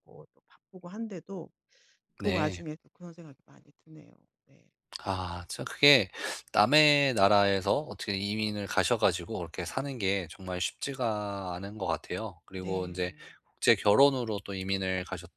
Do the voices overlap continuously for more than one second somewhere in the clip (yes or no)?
no